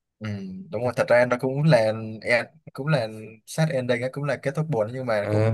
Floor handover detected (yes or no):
no